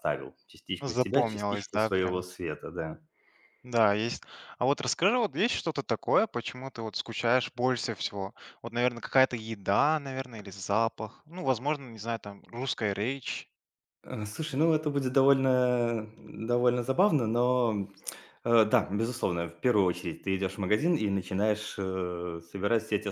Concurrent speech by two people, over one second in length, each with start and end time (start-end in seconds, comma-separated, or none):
0.8-2.2